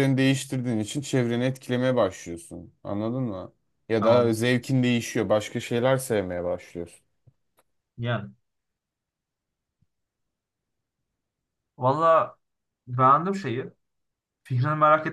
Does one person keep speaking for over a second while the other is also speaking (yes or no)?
no